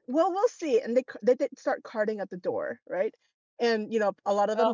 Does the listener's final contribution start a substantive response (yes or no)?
no